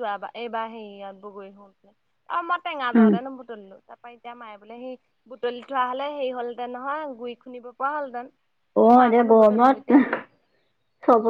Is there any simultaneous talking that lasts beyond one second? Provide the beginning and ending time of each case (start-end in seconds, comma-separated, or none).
none